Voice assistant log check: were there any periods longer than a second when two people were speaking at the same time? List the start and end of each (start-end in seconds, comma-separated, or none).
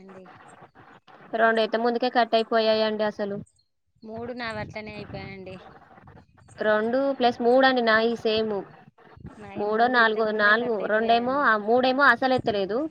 9.6-11.4